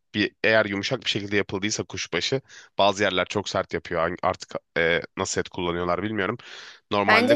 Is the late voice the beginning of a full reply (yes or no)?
no